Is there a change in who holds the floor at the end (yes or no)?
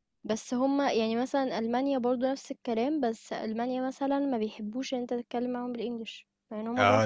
yes